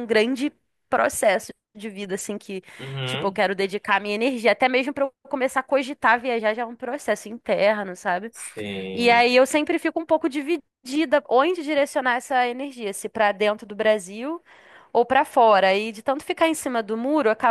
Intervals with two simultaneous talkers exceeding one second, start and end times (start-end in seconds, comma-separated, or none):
none